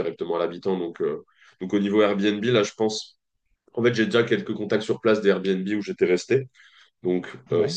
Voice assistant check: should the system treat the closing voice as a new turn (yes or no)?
no